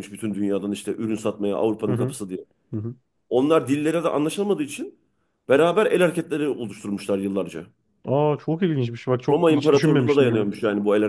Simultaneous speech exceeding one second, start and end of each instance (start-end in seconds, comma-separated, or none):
9.3-10.5